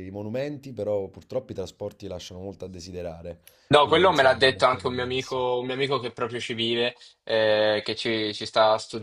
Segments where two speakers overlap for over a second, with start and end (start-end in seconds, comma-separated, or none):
3.8-5.4